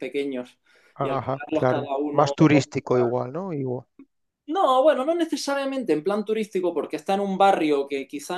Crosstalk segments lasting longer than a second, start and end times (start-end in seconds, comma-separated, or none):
1.0-2.3